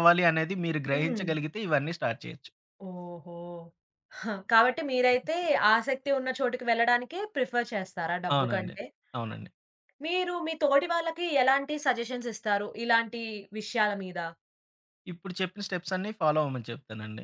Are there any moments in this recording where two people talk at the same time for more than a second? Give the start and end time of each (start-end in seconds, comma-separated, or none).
none